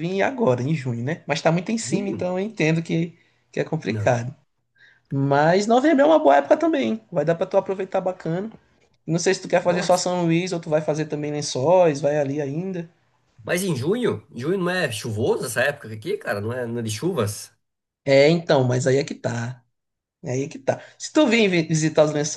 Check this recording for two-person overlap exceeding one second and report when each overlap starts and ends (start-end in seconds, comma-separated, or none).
none